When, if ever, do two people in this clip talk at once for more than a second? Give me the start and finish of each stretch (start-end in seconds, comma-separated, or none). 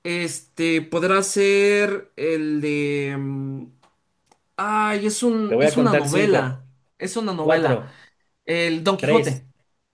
5.5-6.7